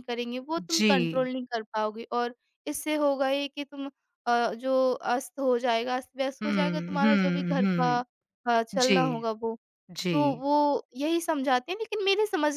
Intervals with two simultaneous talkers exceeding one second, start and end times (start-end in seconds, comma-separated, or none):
6.4-7.9